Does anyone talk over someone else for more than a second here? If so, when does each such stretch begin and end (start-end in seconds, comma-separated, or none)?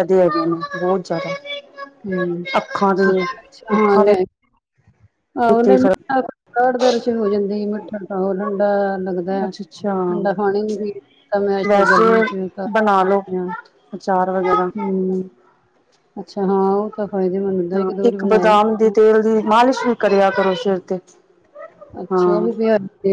none